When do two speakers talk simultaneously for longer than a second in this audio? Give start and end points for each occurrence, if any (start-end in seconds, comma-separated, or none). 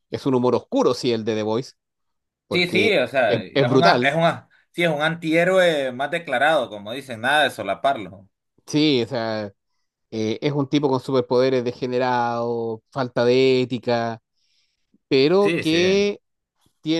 2.5-4.1